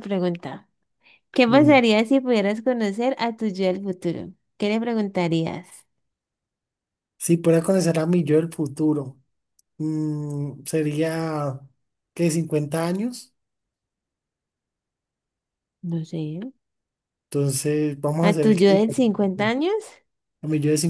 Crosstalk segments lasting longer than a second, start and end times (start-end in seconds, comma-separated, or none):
18.2-19.6